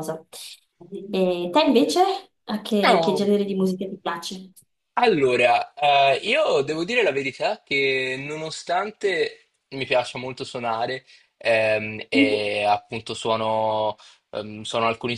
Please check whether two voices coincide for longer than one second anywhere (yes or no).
no